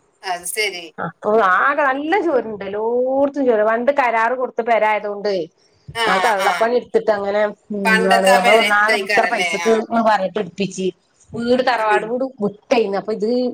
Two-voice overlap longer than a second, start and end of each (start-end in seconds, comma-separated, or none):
7.9-9.7